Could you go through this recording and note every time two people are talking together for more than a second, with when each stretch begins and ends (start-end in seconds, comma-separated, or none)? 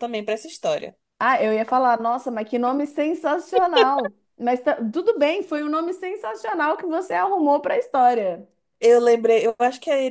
none